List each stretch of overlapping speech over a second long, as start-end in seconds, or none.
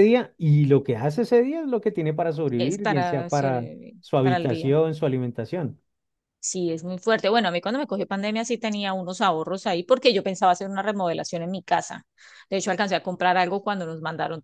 2.6-4.8